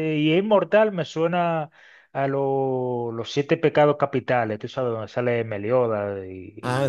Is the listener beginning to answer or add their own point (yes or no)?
yes